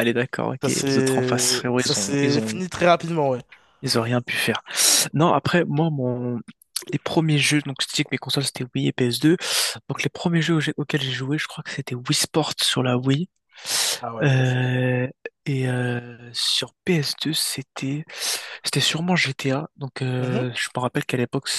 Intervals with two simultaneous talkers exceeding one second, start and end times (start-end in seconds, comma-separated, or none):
0.6-2.6